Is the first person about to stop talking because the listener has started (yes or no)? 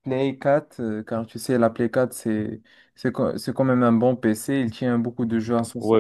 yes